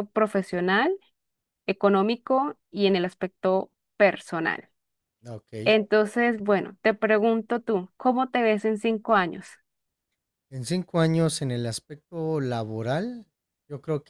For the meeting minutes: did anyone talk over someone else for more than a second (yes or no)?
no